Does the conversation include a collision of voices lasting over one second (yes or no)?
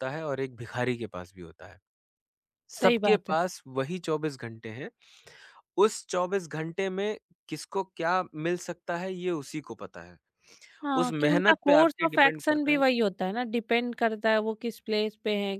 yes